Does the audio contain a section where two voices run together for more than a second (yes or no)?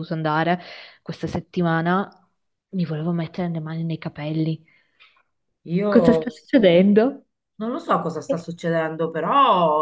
no